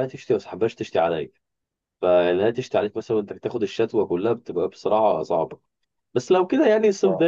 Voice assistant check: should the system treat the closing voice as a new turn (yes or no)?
no